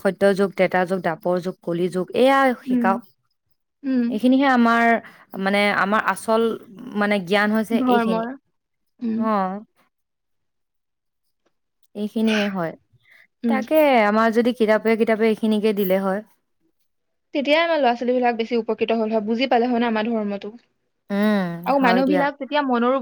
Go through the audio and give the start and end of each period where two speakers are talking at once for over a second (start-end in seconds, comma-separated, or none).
none